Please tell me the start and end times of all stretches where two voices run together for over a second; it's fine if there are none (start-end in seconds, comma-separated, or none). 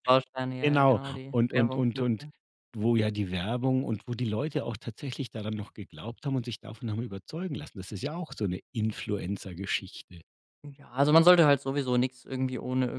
0.6-2.2